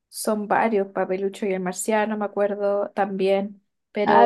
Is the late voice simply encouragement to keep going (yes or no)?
no